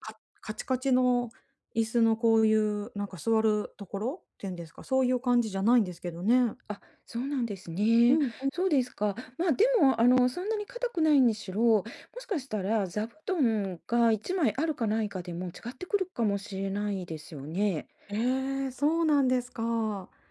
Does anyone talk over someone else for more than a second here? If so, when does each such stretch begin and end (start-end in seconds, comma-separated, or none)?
none